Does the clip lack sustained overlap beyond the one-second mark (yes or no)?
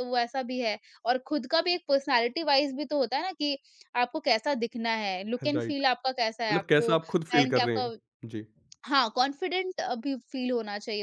no